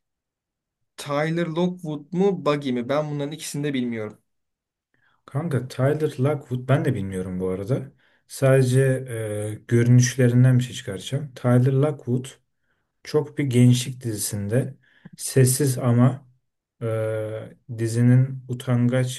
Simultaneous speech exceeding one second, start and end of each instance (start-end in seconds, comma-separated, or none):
none